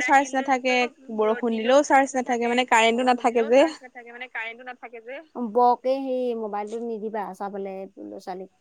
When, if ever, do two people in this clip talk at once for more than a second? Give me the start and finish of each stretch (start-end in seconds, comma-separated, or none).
none